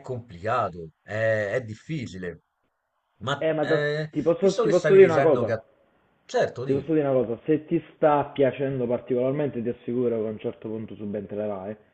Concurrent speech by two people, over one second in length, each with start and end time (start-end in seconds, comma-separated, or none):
3.4-5.5